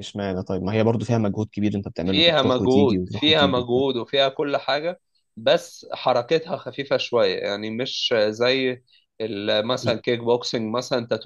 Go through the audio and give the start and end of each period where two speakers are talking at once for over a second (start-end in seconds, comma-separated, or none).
2.0-3.8